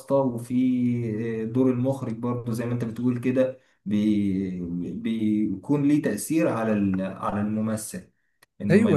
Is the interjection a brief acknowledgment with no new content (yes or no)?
no